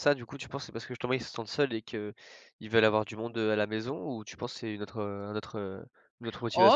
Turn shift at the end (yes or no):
yes